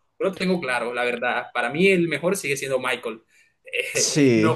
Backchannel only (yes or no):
yes